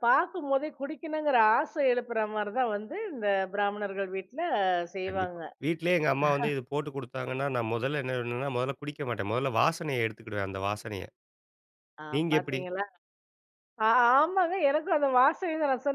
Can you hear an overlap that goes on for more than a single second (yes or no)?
no